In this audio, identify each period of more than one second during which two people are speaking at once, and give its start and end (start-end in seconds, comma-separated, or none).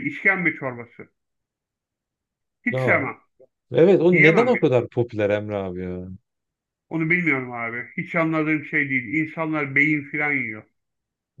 none